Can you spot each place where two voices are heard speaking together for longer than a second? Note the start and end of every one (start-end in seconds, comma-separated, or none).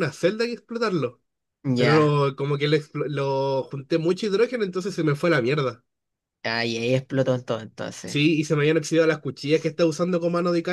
none